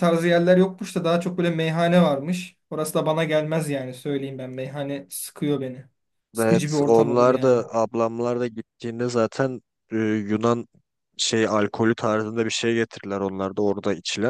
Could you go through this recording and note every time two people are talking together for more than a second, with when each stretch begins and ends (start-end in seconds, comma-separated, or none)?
6.4-7.6